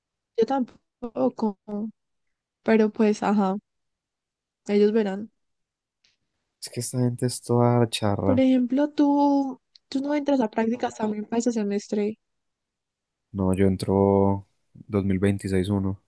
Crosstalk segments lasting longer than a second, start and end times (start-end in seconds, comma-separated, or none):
none